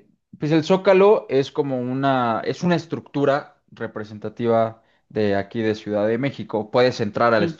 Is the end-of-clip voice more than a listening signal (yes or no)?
no